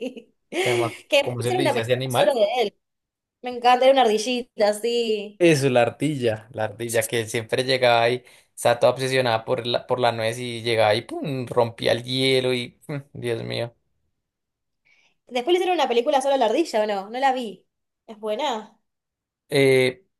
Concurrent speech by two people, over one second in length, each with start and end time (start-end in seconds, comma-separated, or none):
0.6-2.4